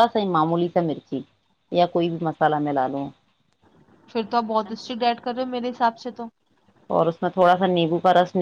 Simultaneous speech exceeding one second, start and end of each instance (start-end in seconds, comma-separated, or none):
none